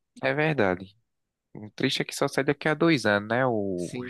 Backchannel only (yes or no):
no